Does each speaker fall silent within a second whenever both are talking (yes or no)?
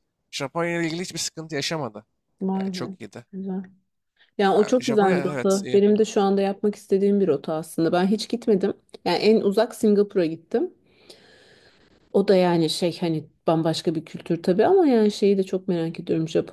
no